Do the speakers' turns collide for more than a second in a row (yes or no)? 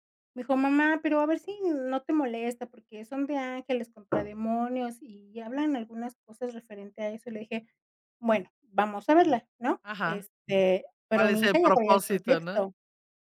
yes